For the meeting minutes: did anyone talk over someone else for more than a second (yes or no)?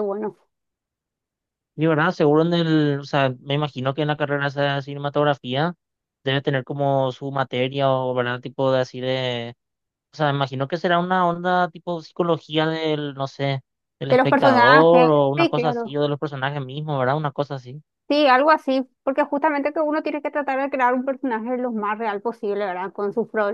yes